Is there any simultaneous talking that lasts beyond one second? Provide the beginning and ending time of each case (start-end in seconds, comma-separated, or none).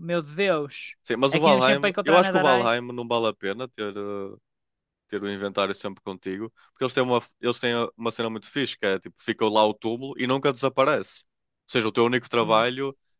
1.3-2.8